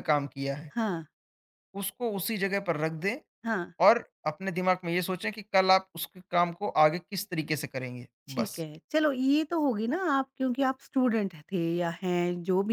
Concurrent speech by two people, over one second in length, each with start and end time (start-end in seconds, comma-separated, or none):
none